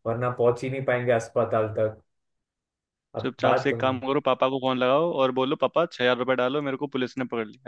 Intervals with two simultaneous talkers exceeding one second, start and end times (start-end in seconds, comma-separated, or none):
none